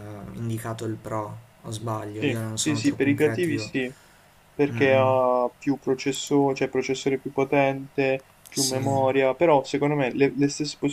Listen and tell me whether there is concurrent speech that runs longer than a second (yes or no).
yes